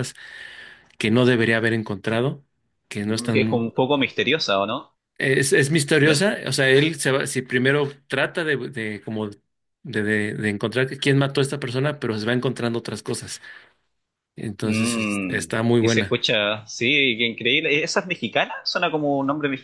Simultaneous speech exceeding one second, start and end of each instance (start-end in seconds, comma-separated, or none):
14.6-16.2